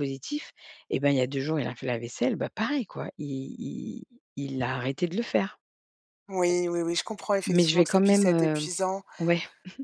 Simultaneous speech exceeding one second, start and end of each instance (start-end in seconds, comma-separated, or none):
7.5-8.7